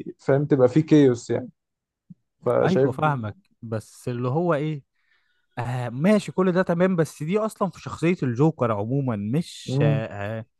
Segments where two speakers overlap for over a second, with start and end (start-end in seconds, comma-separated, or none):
none